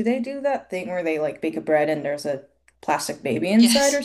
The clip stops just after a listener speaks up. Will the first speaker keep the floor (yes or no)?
no